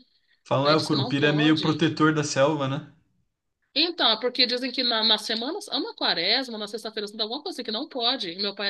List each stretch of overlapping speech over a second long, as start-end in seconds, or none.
0.6-1.8